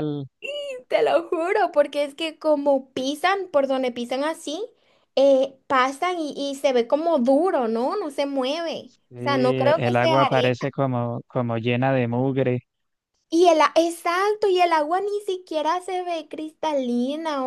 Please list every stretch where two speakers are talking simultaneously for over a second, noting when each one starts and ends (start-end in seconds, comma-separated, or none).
9.1-10.6